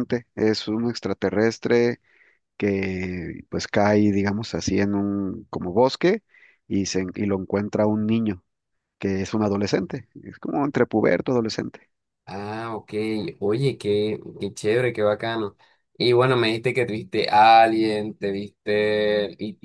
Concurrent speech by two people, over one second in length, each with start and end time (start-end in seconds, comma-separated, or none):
none